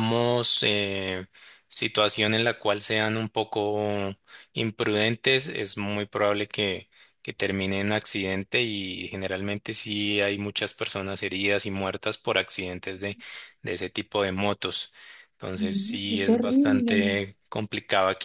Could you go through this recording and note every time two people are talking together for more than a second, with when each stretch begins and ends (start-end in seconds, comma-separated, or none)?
15.5-17.2